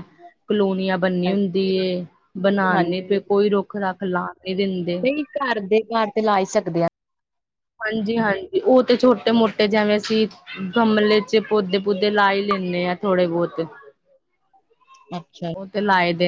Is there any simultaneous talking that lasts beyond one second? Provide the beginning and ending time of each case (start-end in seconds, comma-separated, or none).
none